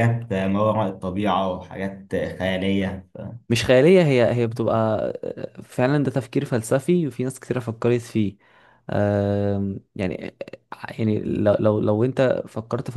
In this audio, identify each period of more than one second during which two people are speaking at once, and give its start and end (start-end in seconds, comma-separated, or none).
none